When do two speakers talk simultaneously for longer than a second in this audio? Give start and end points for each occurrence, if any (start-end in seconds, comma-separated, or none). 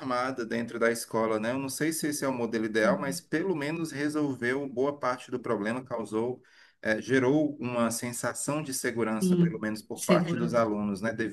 9.2-10.6